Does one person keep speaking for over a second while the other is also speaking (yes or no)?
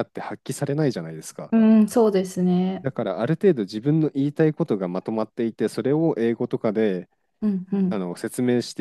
no